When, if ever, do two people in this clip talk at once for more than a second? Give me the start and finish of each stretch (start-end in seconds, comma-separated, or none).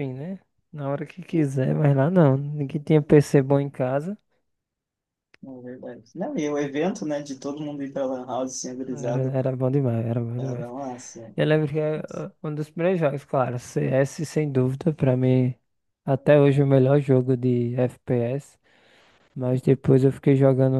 none